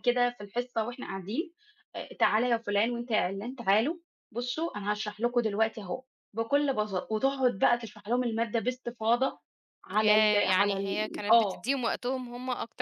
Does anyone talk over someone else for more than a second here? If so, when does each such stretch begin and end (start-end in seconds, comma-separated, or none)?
9.9-11.6